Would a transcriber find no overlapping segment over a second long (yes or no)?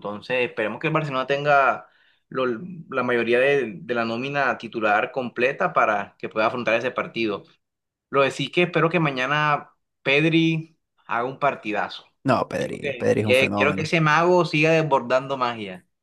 no